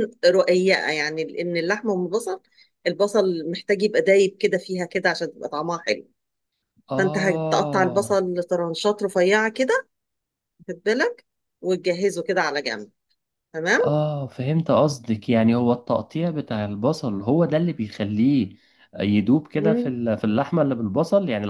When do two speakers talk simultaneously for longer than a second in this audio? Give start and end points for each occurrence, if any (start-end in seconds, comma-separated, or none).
7.0-8.3